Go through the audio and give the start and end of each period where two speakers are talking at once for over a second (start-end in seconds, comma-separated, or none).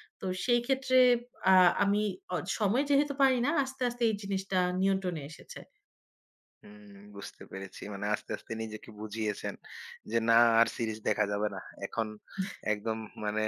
none